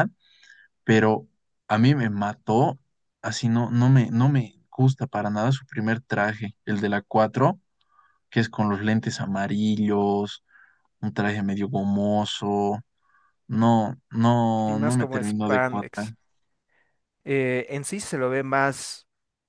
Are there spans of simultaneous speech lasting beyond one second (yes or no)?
yes